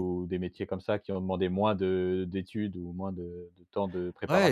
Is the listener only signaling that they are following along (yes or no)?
no